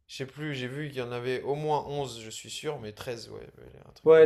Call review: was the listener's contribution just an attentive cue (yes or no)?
no